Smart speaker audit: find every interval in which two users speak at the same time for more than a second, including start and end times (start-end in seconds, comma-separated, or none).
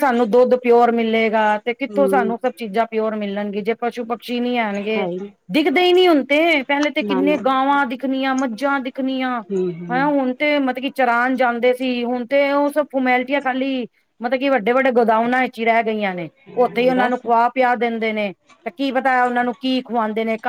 none